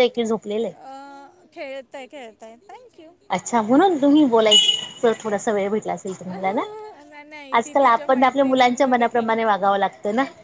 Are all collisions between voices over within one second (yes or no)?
no